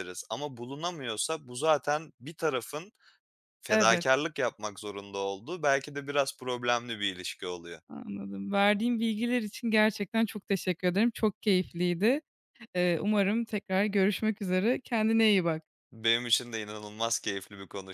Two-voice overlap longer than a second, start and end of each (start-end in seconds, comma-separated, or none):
none